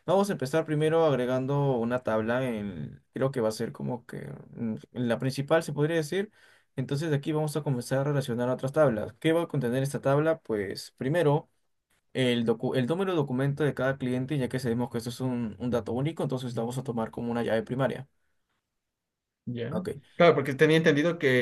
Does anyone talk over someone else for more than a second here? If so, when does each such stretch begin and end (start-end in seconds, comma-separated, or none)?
none